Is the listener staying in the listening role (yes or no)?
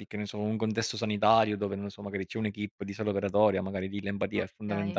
no